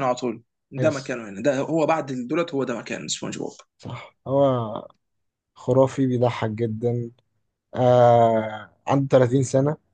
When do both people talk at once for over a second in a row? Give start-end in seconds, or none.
none